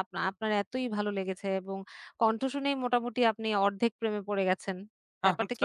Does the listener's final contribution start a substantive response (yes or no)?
yes